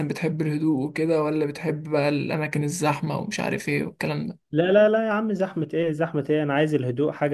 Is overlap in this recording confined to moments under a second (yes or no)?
yes